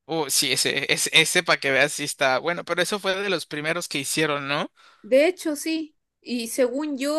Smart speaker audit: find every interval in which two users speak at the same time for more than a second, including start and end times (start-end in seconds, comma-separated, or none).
none